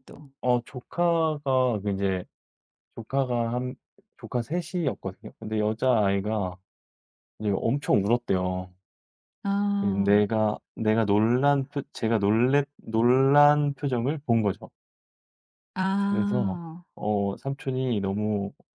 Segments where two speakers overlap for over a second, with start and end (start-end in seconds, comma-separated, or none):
none